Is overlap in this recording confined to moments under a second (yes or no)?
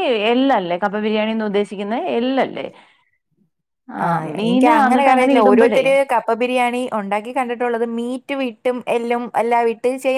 no